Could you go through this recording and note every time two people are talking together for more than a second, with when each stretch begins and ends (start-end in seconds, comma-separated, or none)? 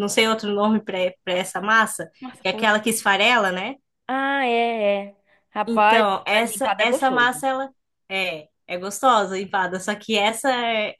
5.7-7.4